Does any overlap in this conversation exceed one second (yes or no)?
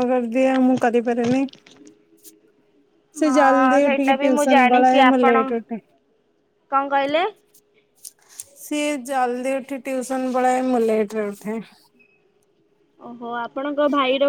yes